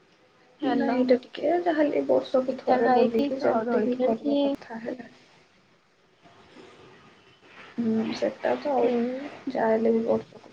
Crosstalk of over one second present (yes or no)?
yes